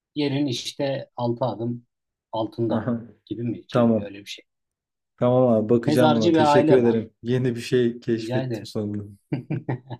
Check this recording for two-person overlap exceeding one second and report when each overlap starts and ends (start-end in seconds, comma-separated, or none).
5.8-7.0